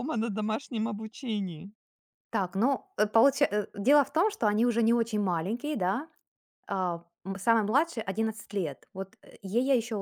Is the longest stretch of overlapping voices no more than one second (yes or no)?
yes